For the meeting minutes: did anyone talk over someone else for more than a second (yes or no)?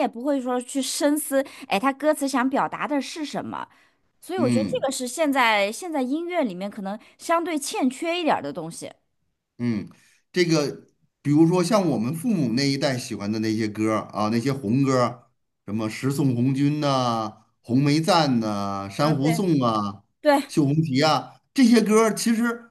no